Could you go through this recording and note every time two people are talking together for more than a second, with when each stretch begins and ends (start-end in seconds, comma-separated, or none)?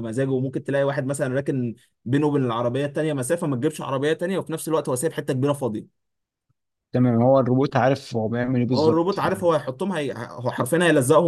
none